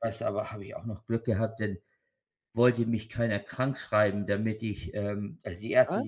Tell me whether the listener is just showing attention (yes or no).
yes